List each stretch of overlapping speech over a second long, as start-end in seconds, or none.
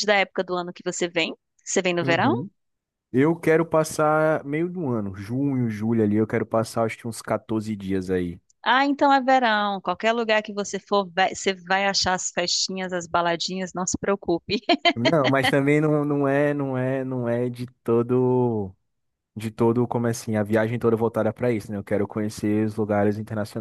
none